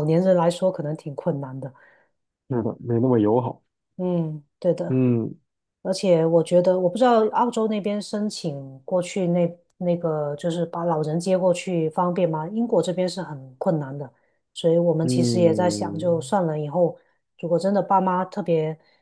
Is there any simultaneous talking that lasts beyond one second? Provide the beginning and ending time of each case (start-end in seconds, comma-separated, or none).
15.0-16.3